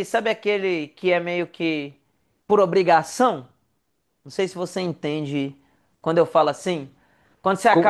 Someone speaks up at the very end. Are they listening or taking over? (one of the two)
taking over